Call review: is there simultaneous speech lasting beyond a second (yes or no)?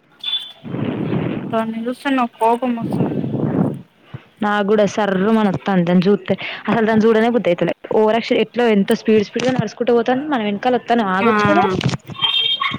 no